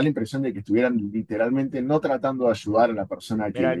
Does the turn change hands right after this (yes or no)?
yes